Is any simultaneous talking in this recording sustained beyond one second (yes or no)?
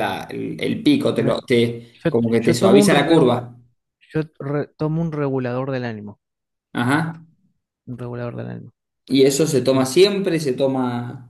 yes